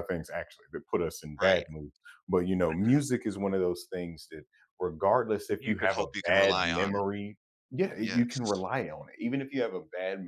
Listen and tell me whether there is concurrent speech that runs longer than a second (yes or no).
yes